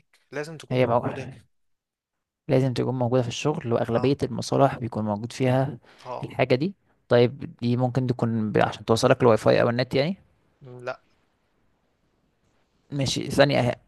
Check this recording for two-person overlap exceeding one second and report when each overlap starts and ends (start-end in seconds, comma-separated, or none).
none